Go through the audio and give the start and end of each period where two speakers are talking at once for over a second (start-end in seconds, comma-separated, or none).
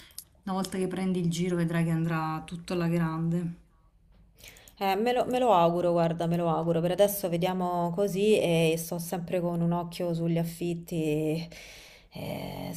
none